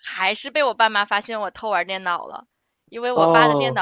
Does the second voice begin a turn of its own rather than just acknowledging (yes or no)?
no